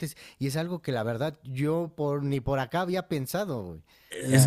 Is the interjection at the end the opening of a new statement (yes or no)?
yes